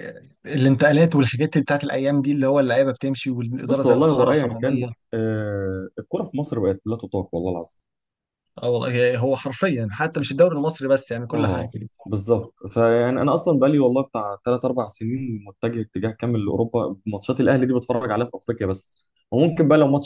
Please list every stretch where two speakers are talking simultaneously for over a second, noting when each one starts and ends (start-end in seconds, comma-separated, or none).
3.6-4.9